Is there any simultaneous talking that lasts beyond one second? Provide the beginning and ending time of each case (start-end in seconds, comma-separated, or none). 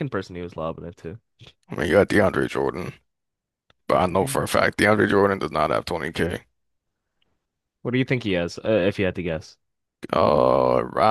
none